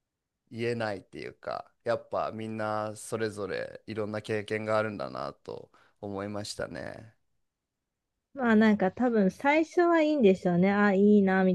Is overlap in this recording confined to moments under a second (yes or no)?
yes